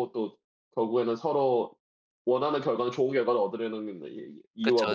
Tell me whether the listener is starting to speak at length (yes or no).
yes